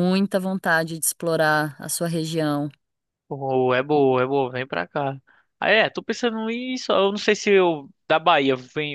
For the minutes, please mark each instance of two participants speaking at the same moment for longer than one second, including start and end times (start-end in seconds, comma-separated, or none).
none